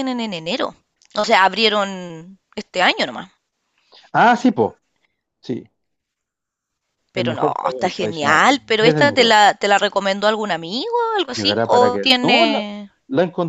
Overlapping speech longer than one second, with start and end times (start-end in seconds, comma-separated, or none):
7.1-9.4, 11.3-12.6